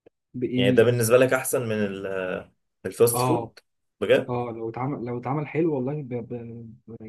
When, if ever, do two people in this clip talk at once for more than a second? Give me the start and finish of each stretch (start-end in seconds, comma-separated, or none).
none